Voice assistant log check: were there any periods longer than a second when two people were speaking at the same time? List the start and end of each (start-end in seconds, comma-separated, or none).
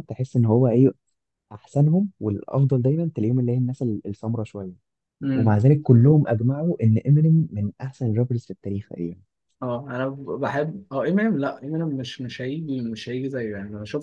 none